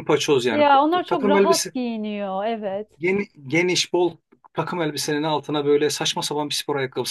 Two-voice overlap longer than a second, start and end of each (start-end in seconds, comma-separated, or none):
0.5-1.7